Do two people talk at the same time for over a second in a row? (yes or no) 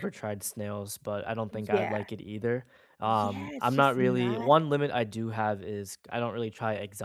yes